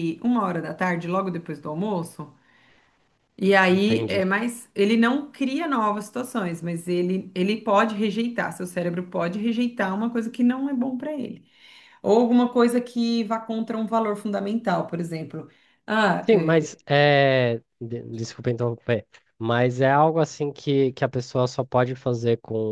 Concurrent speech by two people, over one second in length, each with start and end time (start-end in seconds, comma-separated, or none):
none